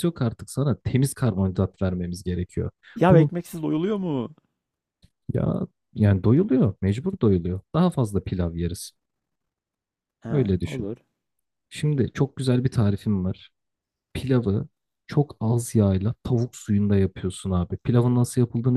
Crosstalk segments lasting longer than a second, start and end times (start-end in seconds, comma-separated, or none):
none